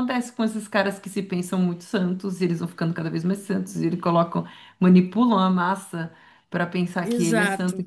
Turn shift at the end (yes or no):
no